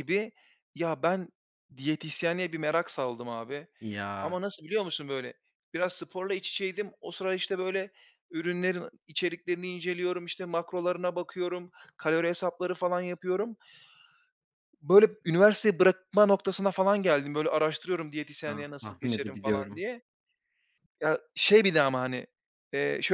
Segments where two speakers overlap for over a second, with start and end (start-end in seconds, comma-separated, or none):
18.4-19.8